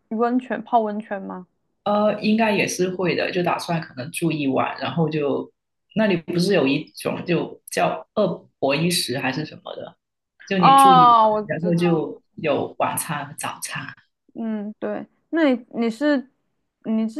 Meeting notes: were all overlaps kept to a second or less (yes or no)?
no